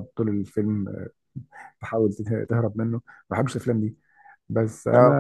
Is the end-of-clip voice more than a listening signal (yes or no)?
no